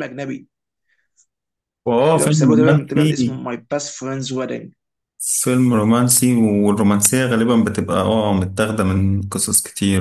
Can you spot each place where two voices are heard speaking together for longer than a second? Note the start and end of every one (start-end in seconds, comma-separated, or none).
2.1-3.4